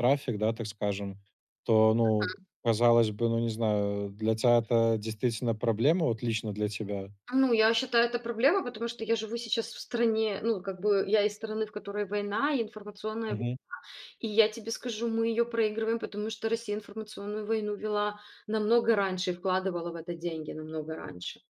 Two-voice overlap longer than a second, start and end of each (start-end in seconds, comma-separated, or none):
none